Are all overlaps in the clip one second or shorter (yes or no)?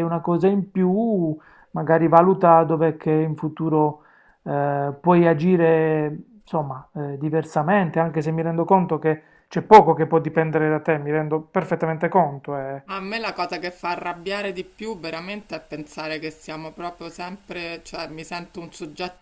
yes